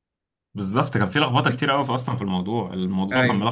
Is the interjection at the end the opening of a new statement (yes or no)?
no